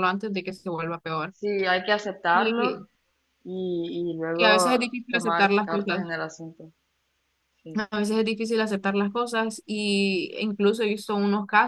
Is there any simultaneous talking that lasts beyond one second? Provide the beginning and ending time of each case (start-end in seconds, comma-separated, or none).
4.4-6.1